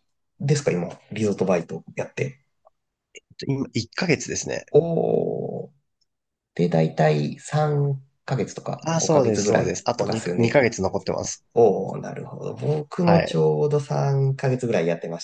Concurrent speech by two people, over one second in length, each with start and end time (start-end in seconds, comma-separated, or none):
8.8-10.6